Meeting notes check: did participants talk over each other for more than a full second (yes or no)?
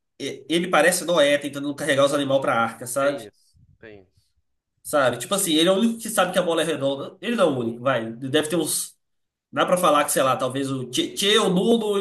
no